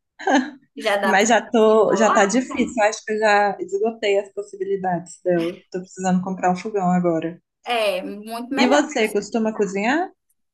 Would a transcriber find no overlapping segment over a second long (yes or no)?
no